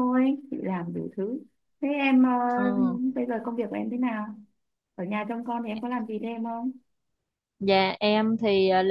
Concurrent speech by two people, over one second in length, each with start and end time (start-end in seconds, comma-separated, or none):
none